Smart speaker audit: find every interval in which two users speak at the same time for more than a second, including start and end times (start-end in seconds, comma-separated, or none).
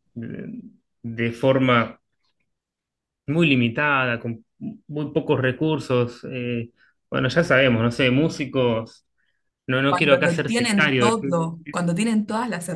9.9-11.1